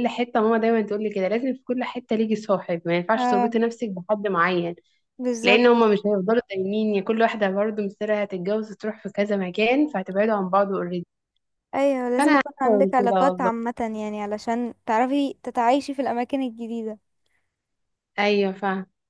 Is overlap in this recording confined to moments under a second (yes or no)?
no